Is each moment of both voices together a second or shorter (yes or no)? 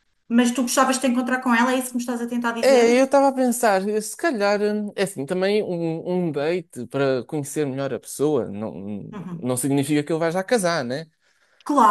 yes